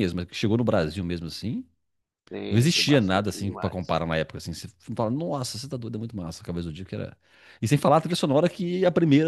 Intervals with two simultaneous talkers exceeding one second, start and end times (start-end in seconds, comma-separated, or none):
2.5-4.0